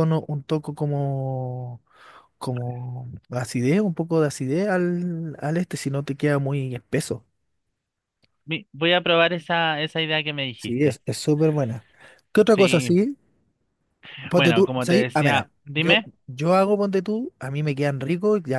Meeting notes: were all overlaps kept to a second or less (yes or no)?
no